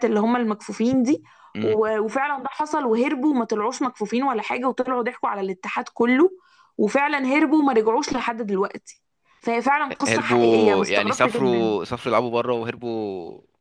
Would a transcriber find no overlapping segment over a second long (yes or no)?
no